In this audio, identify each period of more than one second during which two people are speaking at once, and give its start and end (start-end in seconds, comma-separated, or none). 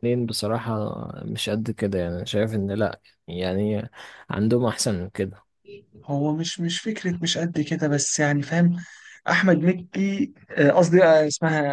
none